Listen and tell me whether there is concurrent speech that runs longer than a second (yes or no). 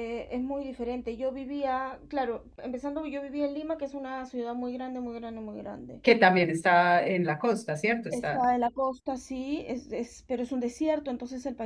no